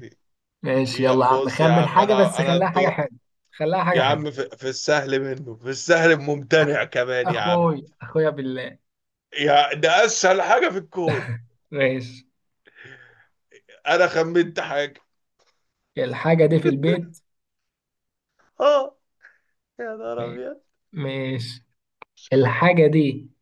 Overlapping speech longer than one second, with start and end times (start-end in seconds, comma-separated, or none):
0.9-3.0